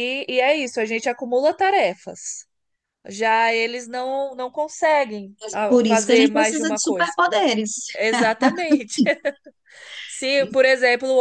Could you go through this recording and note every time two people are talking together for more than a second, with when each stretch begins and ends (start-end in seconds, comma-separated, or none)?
5.7-7.1